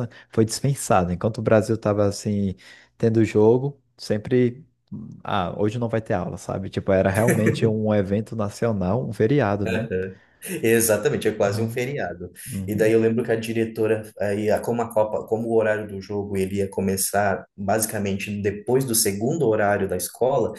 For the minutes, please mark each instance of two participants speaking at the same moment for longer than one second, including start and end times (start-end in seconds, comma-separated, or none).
none